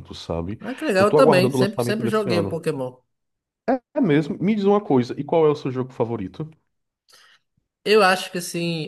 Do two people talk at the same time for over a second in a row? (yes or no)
yes